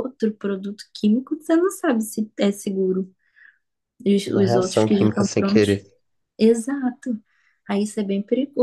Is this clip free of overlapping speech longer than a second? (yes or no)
no